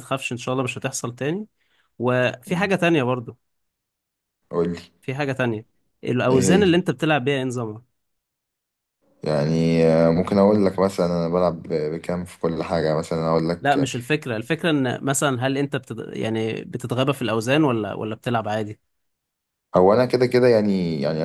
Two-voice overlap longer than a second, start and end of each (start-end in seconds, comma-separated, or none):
none